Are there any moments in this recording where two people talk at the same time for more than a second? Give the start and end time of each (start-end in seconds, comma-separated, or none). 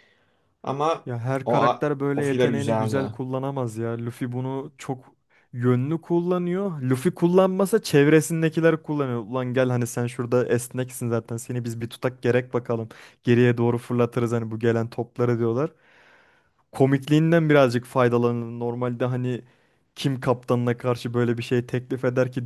1.4-3.1